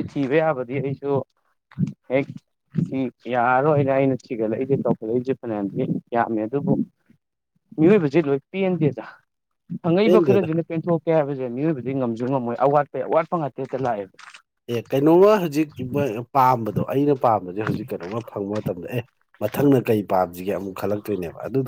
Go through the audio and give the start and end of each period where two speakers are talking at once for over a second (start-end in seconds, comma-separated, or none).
none